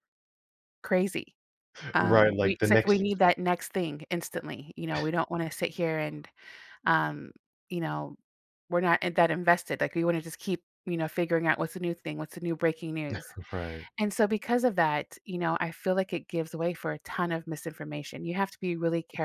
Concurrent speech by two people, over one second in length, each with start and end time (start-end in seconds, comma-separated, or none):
2.0-3.2